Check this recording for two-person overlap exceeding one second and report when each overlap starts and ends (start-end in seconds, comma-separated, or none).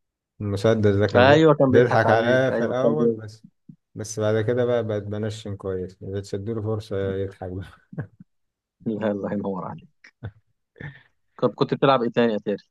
1.1-3.2